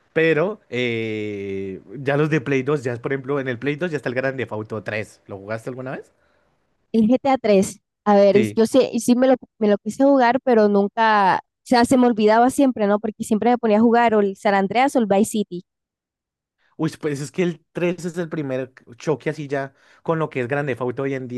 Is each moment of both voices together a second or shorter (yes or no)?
yes